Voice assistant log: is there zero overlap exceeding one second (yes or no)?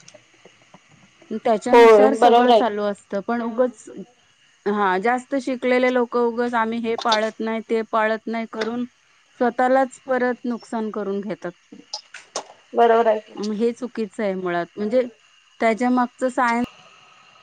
no